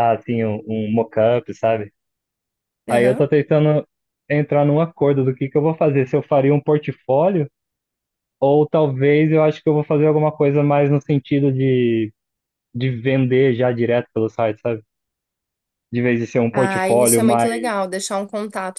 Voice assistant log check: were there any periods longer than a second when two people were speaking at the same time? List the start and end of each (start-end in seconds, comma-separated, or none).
16.5-17.7